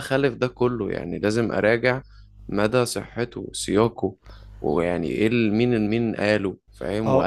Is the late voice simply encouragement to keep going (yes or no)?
no